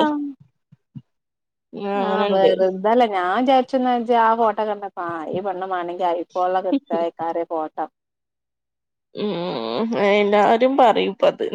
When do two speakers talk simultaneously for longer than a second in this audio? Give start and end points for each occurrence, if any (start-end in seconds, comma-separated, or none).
none